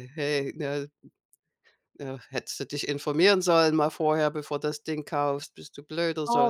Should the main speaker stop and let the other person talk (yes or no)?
yes